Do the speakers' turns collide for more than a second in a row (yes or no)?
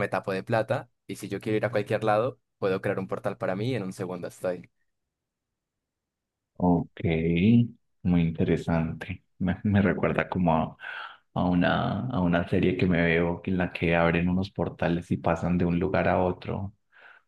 no